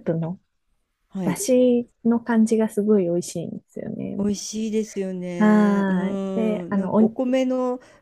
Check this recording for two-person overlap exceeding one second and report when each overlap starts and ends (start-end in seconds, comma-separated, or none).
5.4-7.2